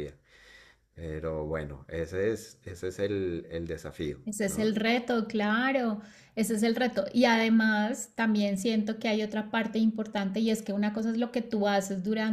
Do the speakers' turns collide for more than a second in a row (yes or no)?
no